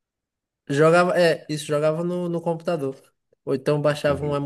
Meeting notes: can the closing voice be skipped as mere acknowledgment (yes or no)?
yes